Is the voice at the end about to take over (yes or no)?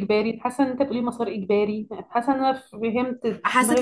yes